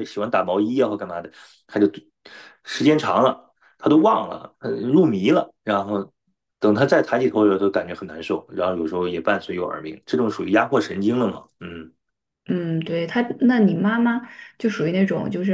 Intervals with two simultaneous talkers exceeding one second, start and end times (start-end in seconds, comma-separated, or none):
none